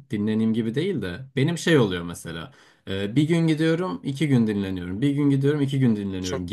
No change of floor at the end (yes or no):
yes